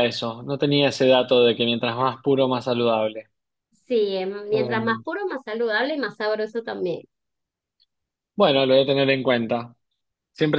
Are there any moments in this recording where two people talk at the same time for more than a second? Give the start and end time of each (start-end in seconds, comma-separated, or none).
none